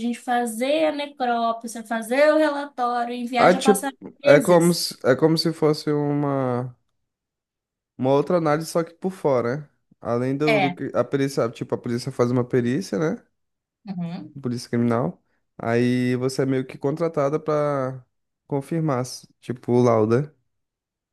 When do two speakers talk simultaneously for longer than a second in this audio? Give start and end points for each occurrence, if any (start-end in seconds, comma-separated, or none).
3.4-4.8